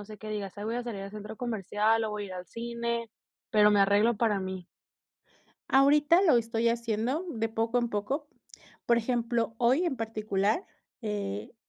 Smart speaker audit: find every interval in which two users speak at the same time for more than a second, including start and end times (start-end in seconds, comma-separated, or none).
none